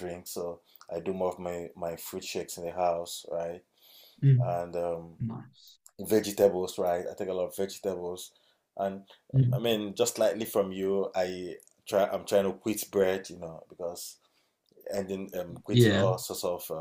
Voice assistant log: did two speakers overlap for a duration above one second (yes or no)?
no